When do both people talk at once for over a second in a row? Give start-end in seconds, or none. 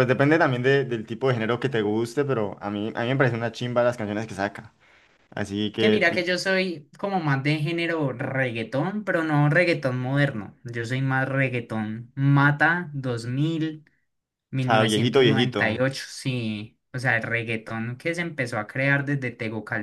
14.6-15.8